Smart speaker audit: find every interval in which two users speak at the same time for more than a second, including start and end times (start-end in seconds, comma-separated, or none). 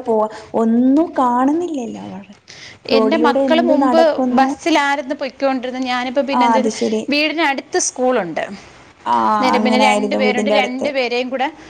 9.3-10.9